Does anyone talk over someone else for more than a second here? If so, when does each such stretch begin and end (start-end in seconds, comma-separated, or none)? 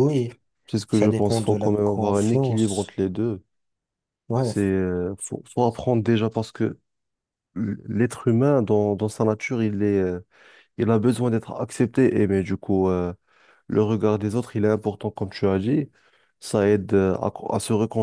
0.9-3.0